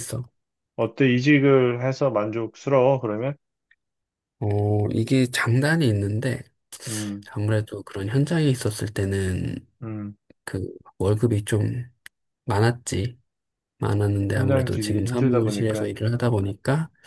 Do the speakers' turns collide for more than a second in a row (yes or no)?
yes